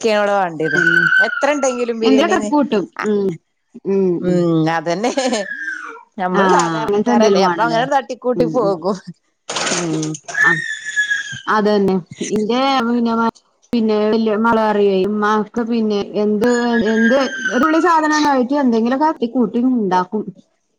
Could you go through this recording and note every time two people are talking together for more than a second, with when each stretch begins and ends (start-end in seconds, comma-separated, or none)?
6.4-7.8